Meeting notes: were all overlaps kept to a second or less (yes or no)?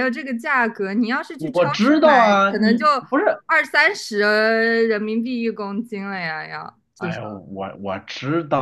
no